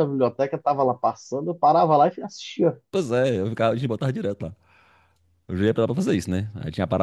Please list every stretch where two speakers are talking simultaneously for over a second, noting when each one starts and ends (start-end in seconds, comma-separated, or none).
none